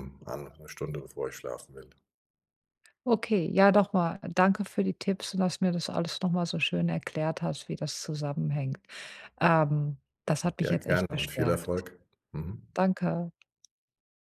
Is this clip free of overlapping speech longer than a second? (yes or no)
no